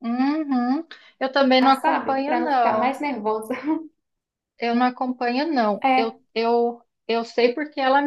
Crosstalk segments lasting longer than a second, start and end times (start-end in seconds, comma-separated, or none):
1.8-3.0